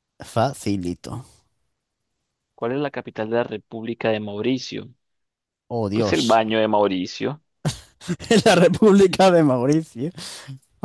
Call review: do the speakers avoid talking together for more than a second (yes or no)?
yes